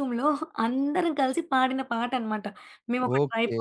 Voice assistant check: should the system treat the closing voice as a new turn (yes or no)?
no